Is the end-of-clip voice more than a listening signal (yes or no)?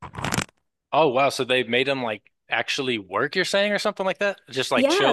yes